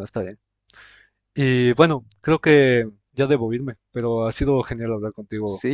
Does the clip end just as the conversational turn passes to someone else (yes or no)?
yes